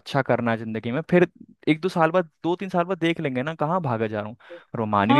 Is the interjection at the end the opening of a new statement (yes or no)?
yes